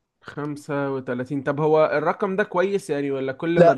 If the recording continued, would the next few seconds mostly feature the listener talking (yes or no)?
yes